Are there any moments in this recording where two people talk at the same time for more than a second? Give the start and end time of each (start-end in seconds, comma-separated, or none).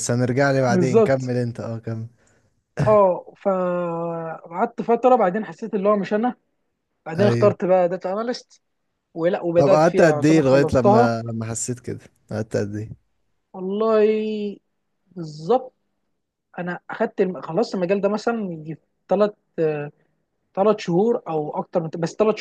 9.6-11.1